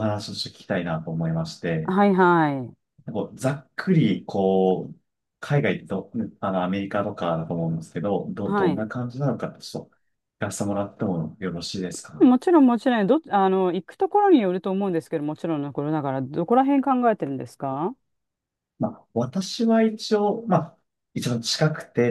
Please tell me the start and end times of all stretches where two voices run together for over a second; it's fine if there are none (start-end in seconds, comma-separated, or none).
none